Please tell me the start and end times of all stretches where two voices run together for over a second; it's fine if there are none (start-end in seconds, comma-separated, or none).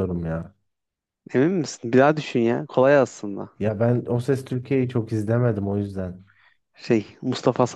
none